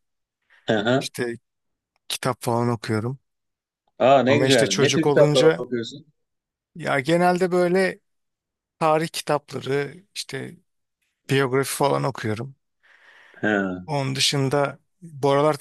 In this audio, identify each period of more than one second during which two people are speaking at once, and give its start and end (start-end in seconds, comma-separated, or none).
4.3-5.7